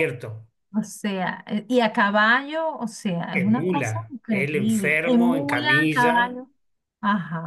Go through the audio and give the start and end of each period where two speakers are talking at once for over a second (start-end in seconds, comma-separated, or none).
3.3-6.4